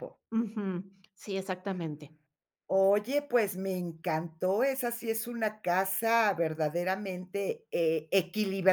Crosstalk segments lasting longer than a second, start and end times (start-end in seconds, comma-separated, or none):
none